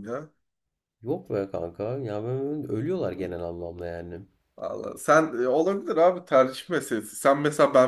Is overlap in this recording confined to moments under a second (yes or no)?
yes